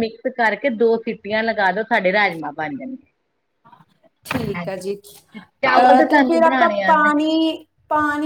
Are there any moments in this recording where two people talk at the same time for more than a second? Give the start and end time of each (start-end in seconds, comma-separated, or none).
5.6-7.1